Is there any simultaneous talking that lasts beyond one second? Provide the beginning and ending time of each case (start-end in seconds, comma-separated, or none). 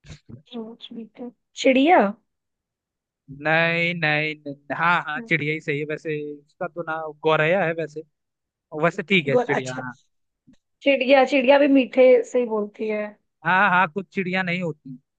none